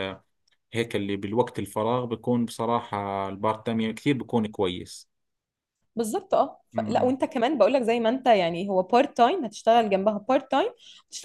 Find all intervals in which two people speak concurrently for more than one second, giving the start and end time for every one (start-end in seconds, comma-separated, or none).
none